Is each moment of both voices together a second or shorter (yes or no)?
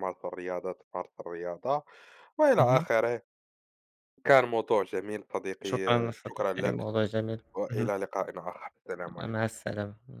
no